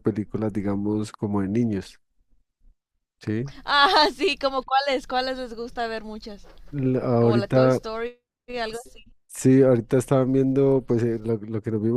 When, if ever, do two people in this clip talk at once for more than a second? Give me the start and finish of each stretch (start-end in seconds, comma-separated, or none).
none